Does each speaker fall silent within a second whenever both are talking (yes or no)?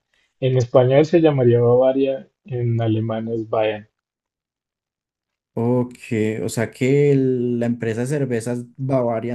yes